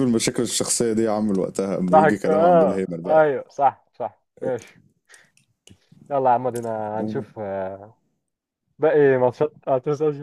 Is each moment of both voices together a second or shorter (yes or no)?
no